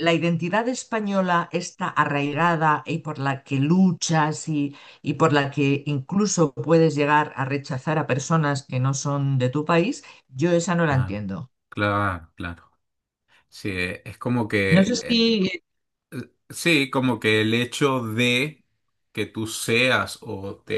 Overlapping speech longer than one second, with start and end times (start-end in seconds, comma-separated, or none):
none